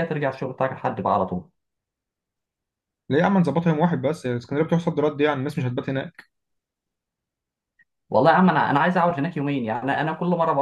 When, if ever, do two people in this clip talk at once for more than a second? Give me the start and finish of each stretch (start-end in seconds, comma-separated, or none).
none